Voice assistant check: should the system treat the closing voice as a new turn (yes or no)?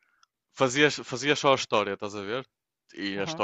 no